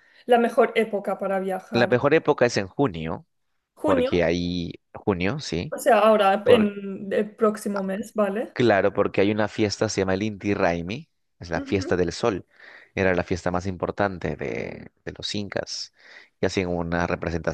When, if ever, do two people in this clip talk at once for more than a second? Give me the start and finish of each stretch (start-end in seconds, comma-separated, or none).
none